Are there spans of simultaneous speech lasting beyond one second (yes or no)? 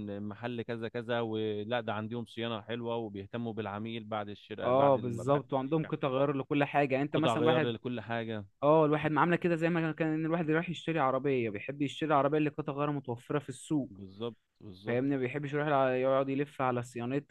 yes